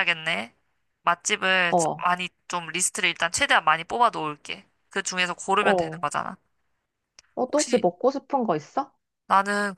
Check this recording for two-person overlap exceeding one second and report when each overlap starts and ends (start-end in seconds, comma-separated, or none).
none